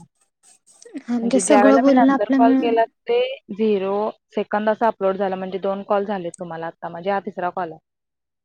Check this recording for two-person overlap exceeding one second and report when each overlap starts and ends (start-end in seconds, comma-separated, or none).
1.2-2.7